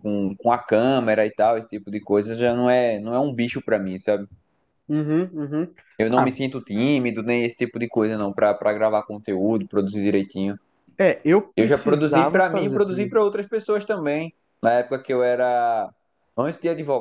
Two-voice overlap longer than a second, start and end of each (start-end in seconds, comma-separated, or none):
11.6-13.1